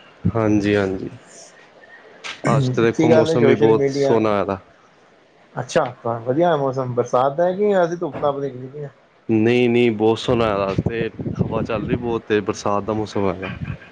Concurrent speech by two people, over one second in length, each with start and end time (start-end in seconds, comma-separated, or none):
2.8-4.2